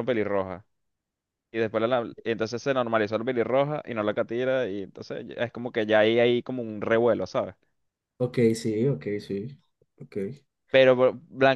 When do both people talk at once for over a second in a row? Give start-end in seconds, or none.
none